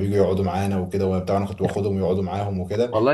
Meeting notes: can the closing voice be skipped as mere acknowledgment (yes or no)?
no